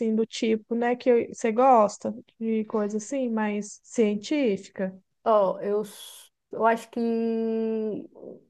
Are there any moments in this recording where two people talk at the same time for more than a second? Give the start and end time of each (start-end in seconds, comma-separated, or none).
none